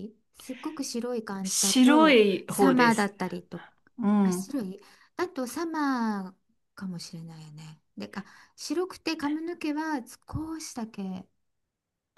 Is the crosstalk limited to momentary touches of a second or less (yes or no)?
no